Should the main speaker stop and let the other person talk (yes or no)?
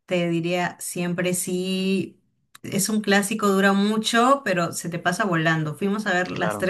no